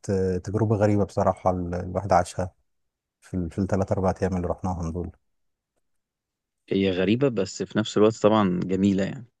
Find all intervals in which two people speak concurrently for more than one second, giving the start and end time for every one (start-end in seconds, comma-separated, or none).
none